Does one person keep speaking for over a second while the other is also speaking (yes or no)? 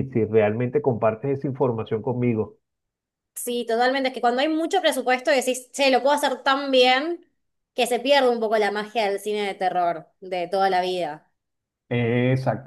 no